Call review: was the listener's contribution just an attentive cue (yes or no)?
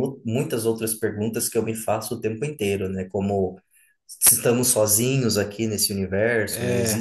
yes